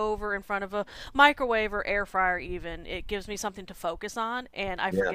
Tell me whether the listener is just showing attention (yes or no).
yes